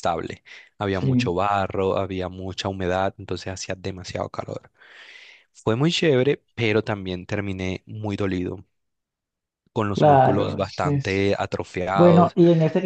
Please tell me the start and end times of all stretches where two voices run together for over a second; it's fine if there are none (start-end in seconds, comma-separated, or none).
9.9-11.2